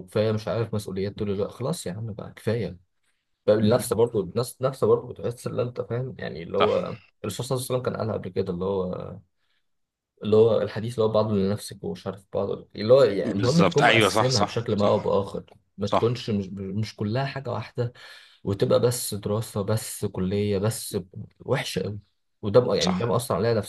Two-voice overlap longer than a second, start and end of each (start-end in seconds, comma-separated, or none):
13.3-15.1